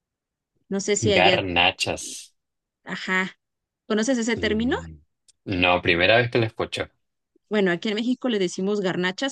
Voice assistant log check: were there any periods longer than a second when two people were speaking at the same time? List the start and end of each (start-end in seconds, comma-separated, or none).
none